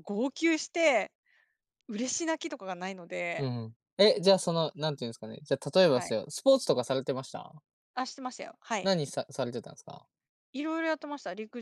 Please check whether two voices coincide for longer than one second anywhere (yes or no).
no